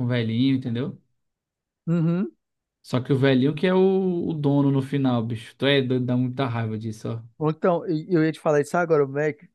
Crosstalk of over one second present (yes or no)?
no